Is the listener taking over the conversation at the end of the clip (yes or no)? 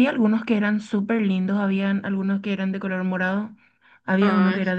no